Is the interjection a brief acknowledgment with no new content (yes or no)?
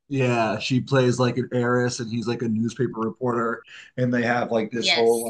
yes